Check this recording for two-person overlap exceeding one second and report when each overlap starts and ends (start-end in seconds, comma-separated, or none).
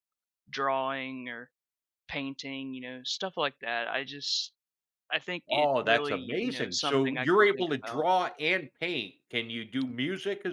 5.5-8.1